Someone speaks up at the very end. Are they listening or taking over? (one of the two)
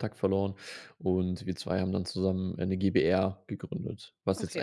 taking over